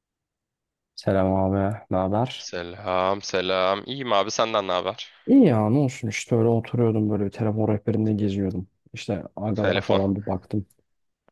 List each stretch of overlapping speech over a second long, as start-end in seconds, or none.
none